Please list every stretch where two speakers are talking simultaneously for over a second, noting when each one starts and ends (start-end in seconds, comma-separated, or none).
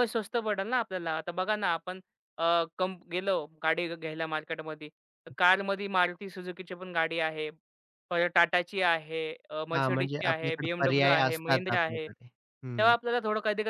9.7-12.1